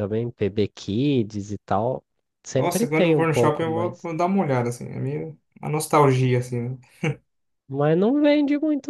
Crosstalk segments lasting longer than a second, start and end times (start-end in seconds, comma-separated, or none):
2.5-4.1